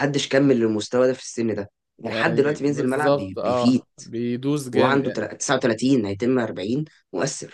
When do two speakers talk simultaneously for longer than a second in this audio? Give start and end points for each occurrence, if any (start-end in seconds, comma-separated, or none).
2.0-3.8